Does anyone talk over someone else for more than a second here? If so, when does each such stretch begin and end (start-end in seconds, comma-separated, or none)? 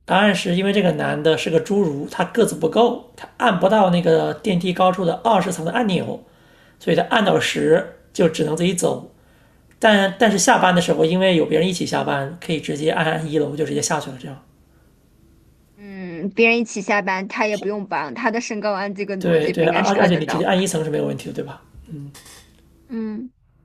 19.2-20.5